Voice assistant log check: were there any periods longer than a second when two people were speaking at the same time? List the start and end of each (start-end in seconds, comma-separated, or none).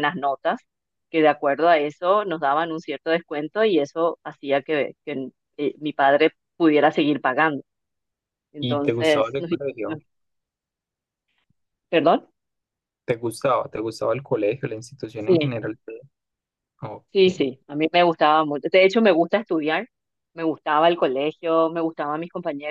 8.6-10.0